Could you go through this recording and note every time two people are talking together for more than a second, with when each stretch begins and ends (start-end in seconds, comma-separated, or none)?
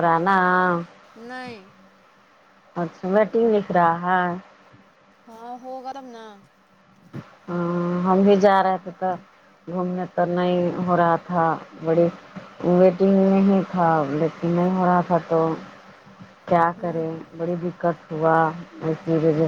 none